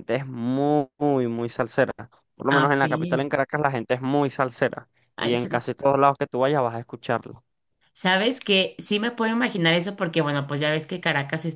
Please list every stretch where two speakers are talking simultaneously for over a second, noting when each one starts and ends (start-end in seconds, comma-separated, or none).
none